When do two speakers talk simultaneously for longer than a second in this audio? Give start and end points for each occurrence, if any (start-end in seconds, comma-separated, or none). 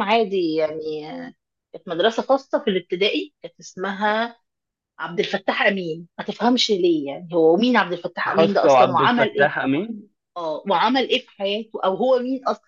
8.3-9.5